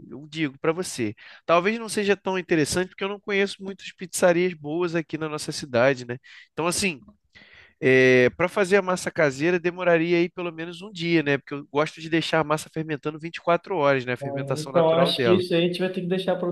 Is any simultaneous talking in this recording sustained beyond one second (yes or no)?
yes